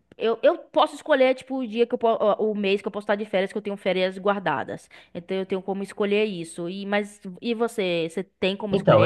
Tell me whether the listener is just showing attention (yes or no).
no